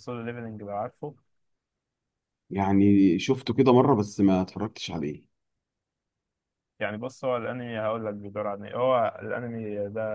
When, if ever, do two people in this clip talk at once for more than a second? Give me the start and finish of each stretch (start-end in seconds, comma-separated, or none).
none